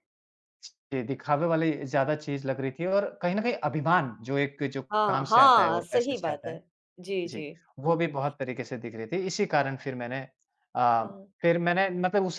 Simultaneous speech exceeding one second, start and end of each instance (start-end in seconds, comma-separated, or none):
4.9-6.6